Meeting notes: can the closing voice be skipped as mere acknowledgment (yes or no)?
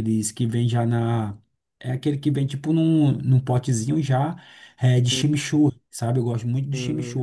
no